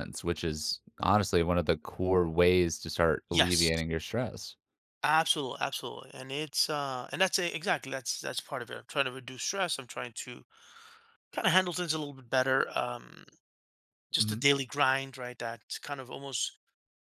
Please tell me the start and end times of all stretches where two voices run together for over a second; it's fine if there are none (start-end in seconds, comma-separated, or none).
none